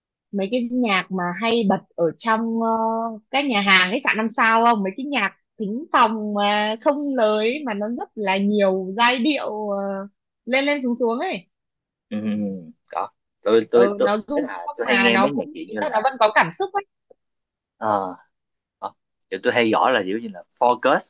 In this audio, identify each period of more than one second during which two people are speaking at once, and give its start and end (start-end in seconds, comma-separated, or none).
13.7-15.9